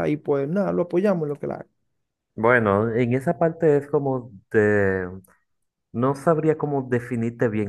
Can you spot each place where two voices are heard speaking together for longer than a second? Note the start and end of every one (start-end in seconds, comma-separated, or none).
none